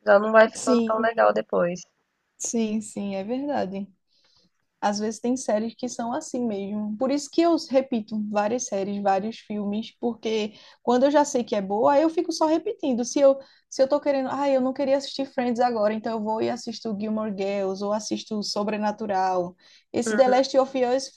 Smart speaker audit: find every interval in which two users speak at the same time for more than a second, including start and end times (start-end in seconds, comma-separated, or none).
none